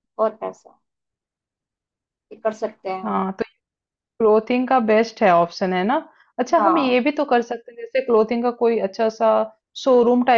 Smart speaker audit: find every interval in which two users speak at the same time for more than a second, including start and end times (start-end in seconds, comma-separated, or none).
none